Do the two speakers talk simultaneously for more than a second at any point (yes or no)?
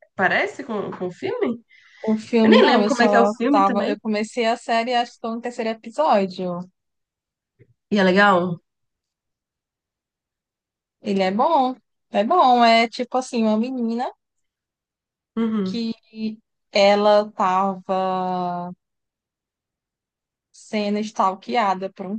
yes